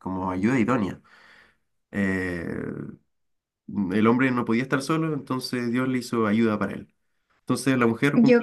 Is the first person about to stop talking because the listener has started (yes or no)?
no